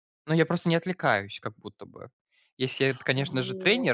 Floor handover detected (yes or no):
no